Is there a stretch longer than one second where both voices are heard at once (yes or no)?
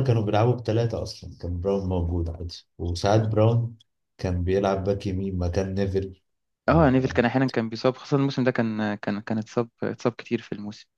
no